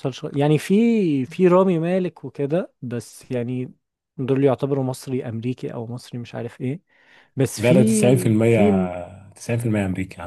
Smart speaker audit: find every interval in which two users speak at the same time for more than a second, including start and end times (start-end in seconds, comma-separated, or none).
7.6-8.9